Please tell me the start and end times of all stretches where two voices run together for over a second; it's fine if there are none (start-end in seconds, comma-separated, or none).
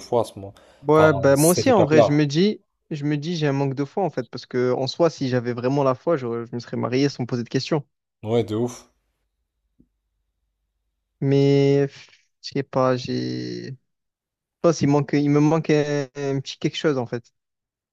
1.0-2.2